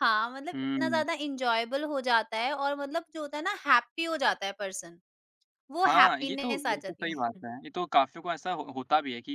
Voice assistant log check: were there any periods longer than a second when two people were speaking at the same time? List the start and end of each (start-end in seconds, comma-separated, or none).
5.9-7.4